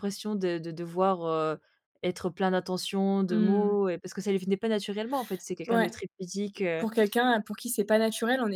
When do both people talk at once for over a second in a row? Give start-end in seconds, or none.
none